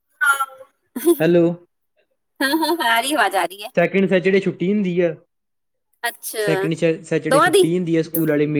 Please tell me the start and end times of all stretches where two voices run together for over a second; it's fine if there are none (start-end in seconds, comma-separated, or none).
none